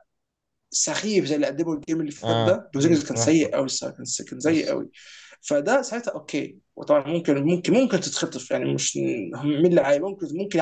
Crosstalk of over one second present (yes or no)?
yes